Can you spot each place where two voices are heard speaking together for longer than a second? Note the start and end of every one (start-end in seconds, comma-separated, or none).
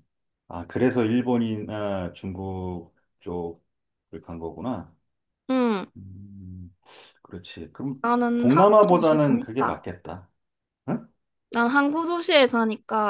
8.4-9.8